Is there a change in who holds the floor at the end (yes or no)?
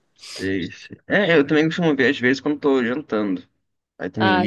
no